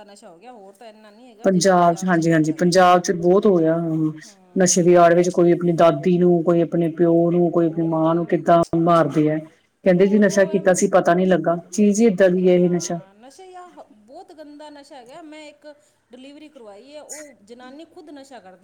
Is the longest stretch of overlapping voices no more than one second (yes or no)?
no